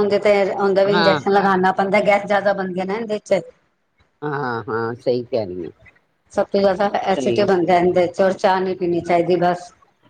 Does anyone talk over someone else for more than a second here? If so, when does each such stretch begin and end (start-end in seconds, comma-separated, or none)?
none